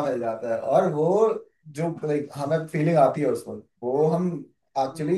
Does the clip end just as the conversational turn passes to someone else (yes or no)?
no